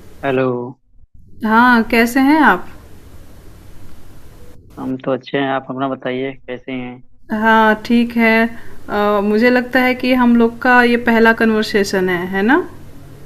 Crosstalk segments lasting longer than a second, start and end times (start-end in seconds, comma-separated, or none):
none